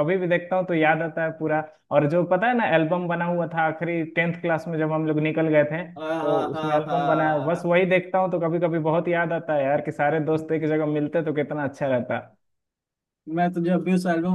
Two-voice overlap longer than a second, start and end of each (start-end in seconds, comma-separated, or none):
6.2-7.7